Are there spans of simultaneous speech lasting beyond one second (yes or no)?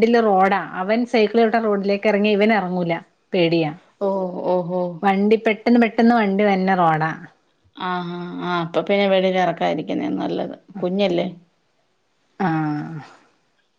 no